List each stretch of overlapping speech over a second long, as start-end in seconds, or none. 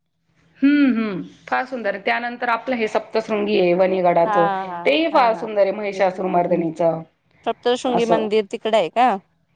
none